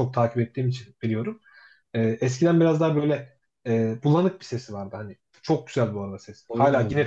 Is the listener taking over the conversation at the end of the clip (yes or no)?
no